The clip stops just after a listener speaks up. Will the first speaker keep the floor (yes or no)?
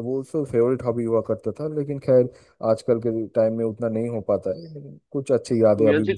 no